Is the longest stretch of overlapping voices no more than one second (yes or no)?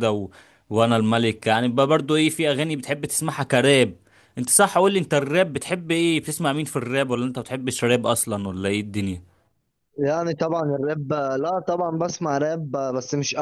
yes